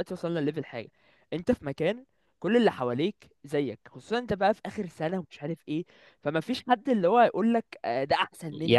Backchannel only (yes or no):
no